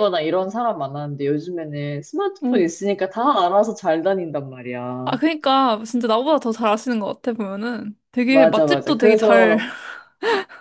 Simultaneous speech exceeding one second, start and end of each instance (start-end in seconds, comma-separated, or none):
8.3-9.6